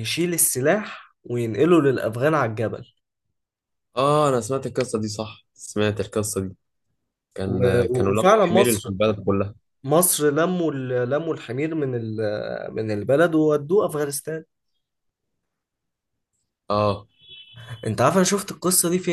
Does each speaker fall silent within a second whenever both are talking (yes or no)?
no